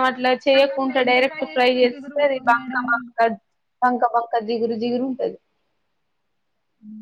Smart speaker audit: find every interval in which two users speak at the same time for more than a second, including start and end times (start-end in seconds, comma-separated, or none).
0.6-2.8